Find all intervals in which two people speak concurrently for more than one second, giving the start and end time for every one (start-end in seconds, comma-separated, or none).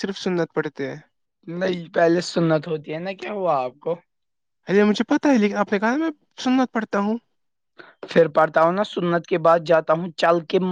none